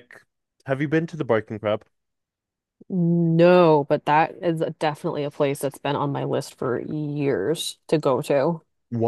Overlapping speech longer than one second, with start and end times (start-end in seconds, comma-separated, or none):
none